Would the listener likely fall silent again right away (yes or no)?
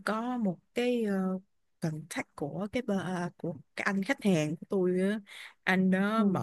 yes